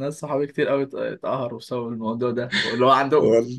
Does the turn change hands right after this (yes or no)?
no